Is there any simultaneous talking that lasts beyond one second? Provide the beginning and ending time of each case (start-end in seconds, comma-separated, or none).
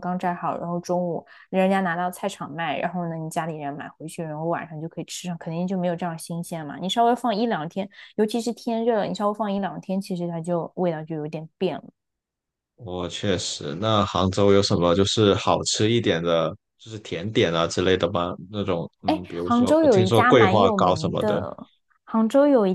19.1-21.4